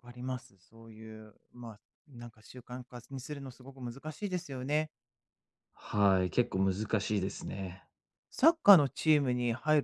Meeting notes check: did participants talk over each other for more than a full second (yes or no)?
no